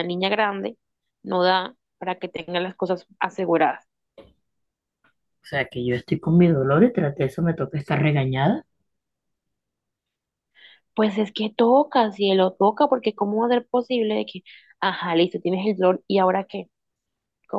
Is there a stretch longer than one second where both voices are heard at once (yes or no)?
no